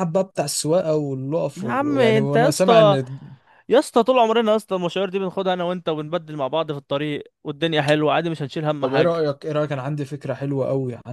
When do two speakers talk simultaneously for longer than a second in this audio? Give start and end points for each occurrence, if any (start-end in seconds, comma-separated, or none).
1.6-2.9